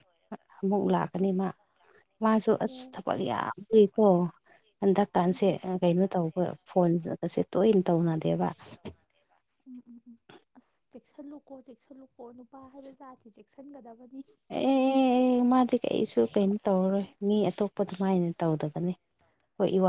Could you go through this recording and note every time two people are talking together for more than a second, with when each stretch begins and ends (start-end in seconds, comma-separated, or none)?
none